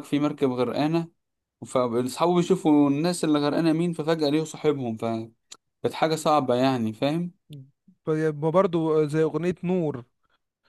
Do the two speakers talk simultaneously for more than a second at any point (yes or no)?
no